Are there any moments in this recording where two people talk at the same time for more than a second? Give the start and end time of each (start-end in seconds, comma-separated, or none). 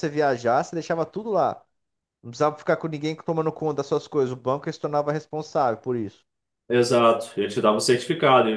none